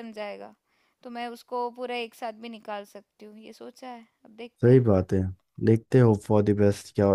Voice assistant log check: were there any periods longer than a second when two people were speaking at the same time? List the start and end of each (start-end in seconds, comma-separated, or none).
none